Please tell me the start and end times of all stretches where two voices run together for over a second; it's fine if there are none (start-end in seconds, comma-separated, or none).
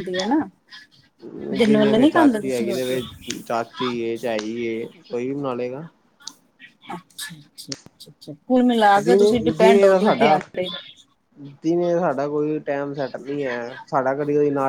1.7-3.0